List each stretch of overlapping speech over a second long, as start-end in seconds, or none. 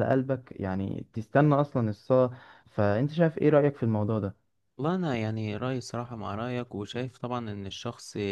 none